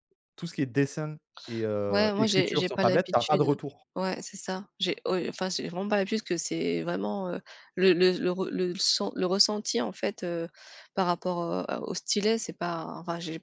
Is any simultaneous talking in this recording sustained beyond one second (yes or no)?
yes